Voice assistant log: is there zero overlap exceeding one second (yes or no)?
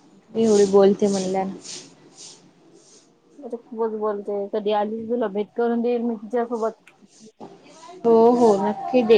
yes